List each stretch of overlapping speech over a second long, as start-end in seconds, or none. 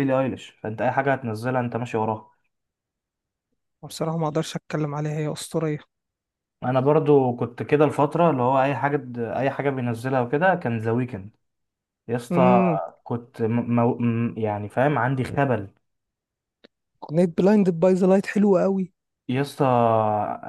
none